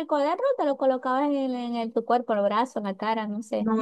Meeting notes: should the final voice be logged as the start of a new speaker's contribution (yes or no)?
yes